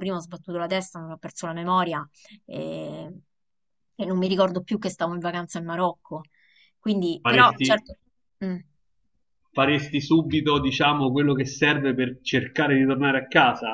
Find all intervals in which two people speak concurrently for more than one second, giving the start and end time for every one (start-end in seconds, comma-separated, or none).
none